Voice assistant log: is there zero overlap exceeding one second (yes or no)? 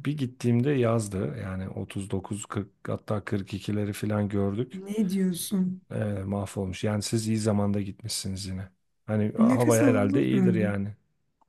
no